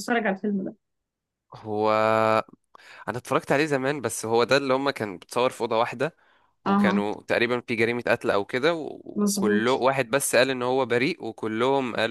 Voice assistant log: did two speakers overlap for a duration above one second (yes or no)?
no